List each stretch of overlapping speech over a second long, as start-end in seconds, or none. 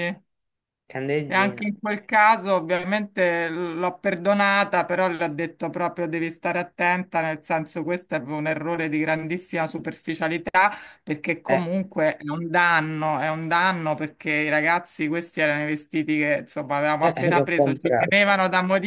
17.0-18.2